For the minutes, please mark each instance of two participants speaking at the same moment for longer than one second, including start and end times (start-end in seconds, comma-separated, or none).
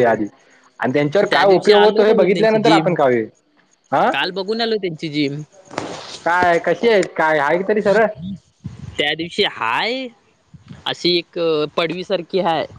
1.3-2.9